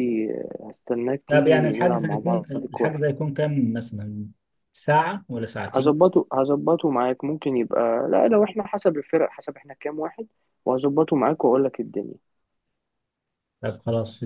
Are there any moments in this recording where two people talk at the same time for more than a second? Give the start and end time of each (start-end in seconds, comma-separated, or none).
1.3-3.0